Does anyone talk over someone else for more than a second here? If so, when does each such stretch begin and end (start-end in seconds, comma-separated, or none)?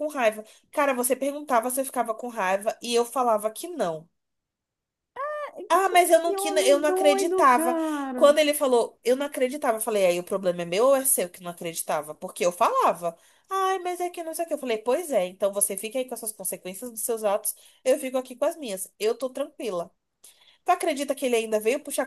5.8-8.4